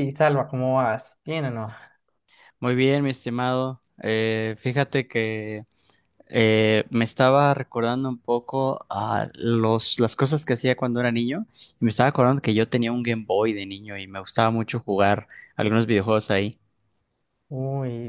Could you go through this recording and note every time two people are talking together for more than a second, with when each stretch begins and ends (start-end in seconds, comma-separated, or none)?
none